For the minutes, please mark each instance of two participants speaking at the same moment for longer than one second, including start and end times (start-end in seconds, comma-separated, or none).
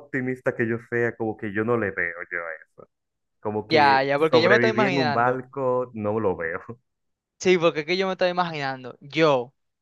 3.7-5.4